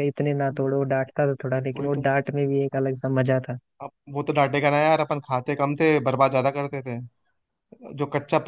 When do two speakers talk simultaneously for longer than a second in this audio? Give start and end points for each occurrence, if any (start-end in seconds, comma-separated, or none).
none